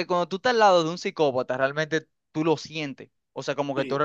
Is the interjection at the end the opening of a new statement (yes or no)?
no